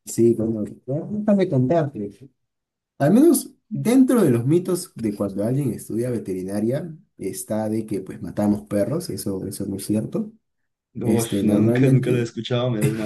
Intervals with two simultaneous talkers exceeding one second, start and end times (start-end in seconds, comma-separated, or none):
11.0-12.3